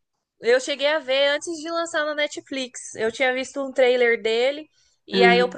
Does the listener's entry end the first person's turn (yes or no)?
no